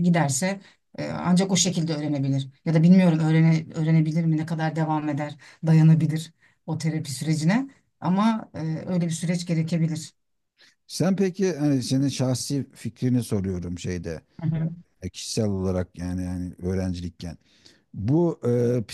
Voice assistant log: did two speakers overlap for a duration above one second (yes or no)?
no